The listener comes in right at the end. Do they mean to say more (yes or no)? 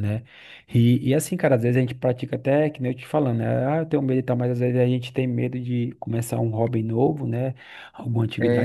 no